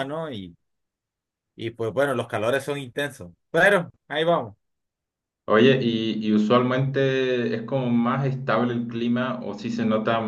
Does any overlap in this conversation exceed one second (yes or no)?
no